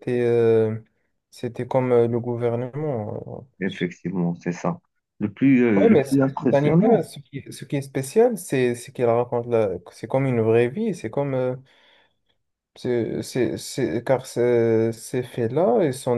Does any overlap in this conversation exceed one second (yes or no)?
yes